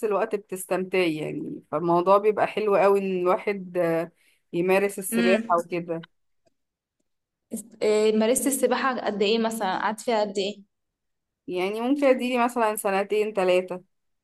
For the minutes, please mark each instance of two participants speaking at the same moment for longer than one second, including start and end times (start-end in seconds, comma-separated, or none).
none